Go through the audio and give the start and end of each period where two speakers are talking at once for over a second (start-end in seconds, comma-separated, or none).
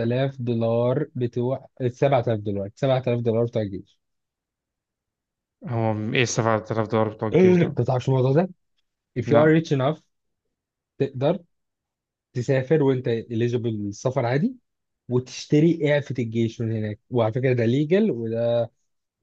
none